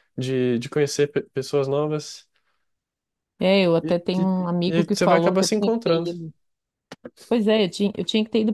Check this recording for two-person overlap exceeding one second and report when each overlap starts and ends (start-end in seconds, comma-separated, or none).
3.8-6.1